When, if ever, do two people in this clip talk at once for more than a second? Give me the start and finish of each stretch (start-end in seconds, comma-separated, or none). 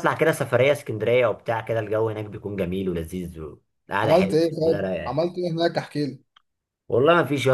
4.0-5.2